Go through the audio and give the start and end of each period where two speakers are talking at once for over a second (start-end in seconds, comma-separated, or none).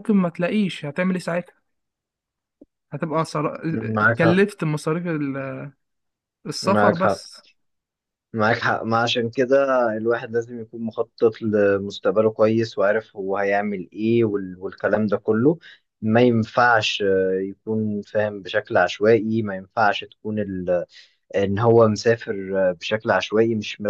none